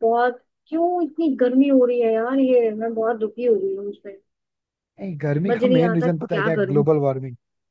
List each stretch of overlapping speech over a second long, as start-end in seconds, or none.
5.5-6.8